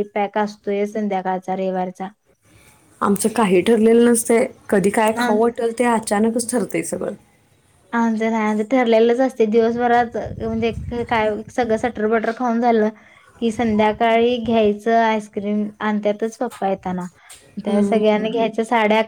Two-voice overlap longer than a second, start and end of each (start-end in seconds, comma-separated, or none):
none